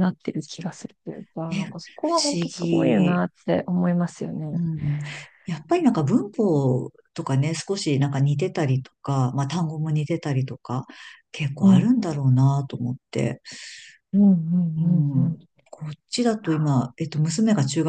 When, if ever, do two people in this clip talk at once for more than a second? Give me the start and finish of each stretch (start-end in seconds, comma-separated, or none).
1.5-3.2